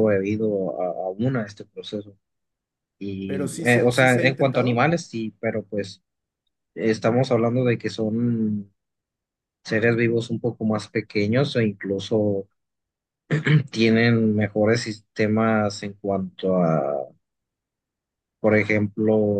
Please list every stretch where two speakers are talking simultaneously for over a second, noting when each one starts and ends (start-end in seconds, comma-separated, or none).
3.2-4.9